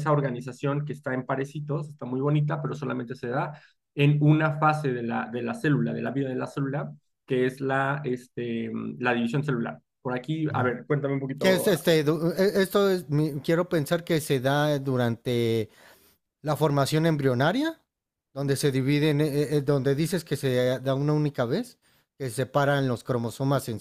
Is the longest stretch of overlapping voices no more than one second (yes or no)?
yes